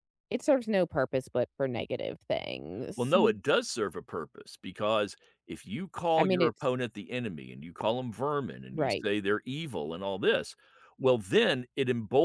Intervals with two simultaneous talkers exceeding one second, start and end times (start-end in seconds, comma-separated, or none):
none